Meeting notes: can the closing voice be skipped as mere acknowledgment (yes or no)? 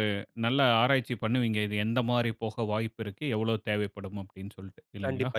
no